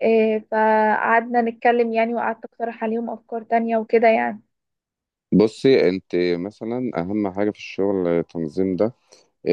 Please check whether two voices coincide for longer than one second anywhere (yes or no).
no